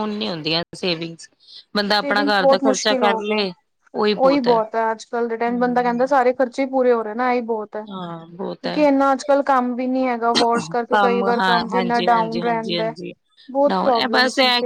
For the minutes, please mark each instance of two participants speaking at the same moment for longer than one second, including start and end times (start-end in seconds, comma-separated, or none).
2.0-3.5, 10.9-12.9